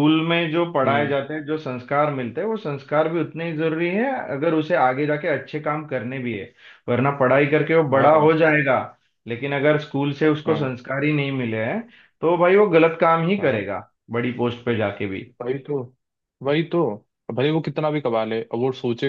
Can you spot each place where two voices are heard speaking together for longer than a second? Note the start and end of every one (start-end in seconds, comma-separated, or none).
none